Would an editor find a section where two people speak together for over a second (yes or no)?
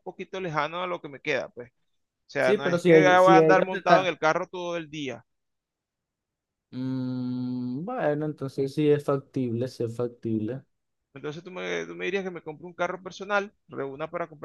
yes